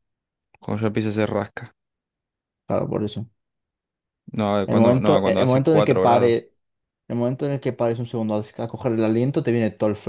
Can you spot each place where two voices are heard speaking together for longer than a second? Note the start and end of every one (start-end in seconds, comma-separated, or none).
4.7-6.4